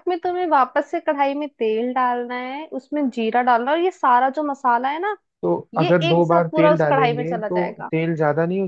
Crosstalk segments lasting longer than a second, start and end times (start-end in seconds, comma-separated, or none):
5.7-7.9